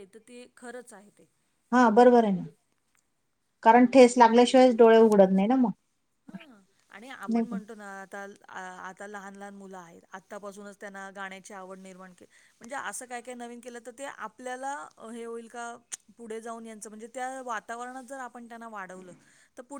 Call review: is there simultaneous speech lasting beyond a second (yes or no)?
no